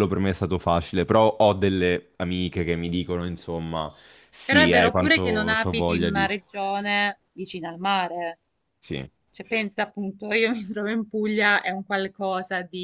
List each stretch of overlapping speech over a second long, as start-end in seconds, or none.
4.4-6.3